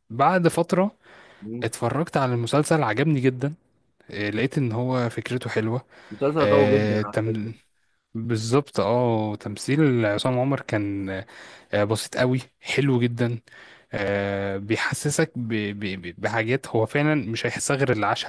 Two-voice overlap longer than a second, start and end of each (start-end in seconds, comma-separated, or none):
none